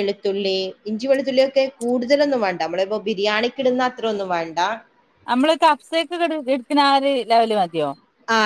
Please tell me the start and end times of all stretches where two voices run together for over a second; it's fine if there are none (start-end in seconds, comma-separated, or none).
none